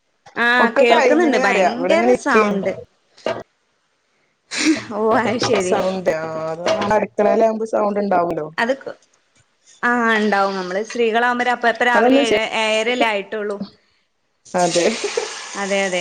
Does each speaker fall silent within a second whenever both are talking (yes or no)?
no